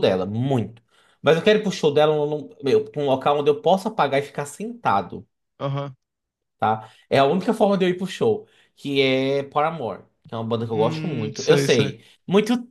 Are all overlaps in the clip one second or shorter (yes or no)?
no